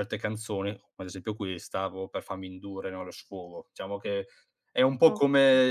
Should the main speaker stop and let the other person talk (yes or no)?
no